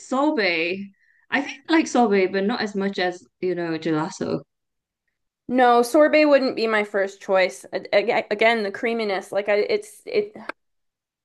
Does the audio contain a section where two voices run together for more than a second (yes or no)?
no